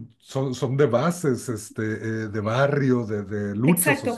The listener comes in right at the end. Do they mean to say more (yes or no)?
yes